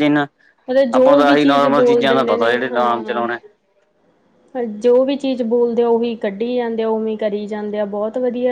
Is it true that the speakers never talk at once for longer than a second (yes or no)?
no